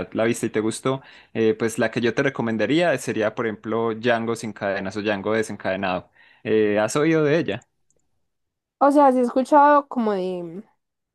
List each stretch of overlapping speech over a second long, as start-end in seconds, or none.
none